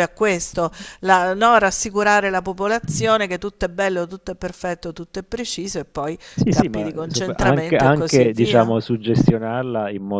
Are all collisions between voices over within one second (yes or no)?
no